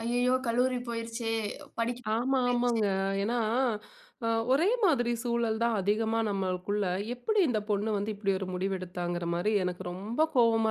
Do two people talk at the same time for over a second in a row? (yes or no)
no